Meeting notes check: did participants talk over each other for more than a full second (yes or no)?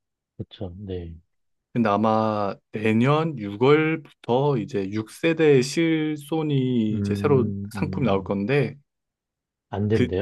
yes